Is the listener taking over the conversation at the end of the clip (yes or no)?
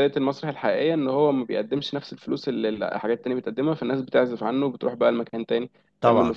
yes